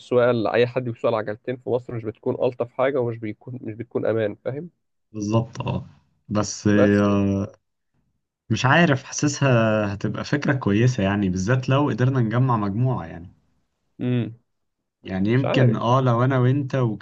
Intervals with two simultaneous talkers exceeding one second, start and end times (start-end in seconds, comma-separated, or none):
none